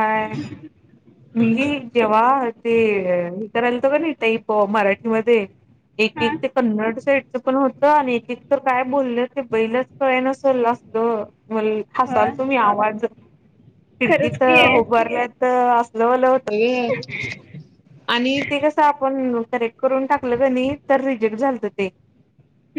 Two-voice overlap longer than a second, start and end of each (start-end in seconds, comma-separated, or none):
none